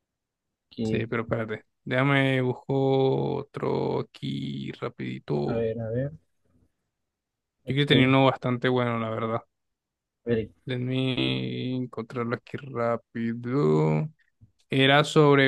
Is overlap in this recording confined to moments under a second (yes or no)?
yes